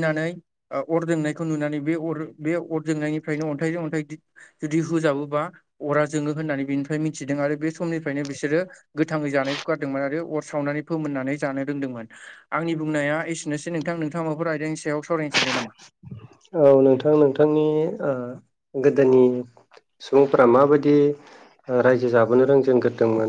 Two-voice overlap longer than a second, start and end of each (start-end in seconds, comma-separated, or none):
none